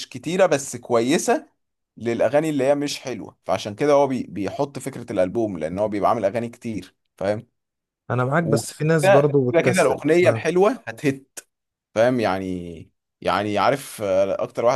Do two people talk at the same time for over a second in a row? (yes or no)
yes